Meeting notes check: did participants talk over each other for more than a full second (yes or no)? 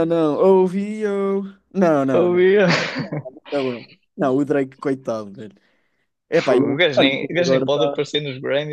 yes